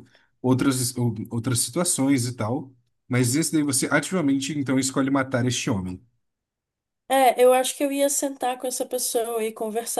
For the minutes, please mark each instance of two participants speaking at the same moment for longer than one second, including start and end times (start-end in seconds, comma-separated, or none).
none